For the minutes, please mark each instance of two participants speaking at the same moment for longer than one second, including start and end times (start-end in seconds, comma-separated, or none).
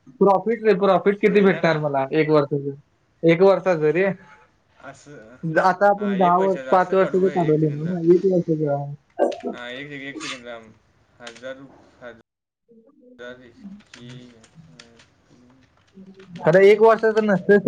6.0-7.9